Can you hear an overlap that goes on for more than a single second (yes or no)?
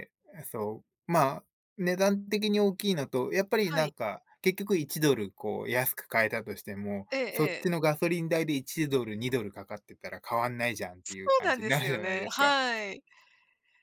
yes